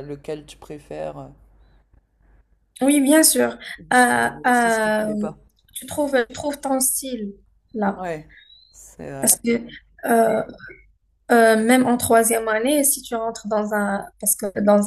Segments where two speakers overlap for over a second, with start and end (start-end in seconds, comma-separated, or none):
3.8-5.1